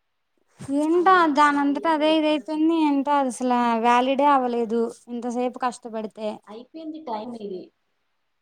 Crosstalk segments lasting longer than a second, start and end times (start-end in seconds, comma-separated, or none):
1.0-2.7